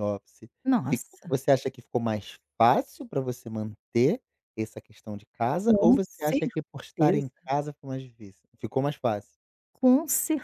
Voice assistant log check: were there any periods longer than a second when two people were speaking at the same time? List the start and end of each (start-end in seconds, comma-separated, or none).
5.6-7.3